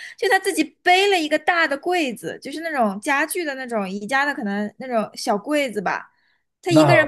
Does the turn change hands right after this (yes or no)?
yes